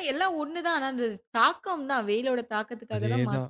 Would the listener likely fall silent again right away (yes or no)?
no